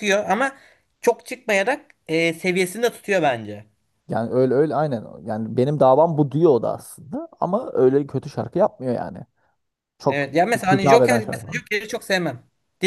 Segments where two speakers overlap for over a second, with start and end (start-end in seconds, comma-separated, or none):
10.1-11.5